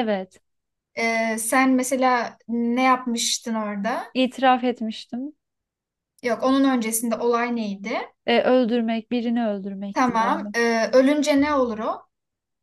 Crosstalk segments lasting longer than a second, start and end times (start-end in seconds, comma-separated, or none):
none